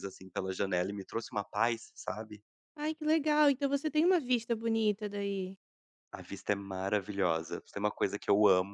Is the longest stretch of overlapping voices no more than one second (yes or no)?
yes